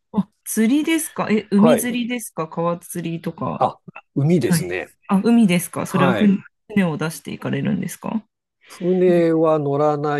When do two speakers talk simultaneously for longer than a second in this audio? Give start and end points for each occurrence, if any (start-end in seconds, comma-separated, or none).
none